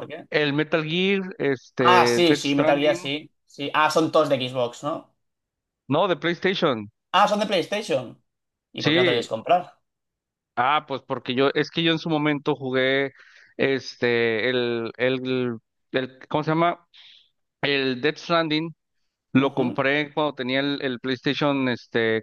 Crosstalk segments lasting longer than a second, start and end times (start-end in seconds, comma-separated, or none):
1.8-3.0